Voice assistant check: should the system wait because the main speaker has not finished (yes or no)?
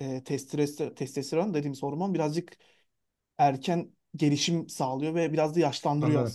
no